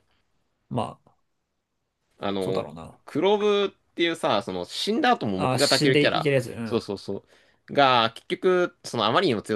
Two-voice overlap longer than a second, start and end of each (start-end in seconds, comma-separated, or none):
5.3-6.8